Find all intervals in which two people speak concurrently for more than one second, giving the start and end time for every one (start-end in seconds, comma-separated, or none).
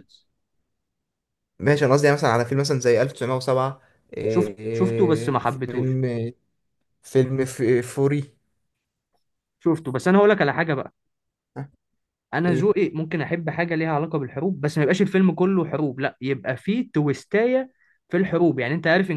4.3-6.0